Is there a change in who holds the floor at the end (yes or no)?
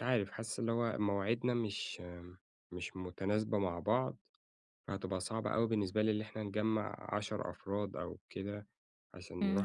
yes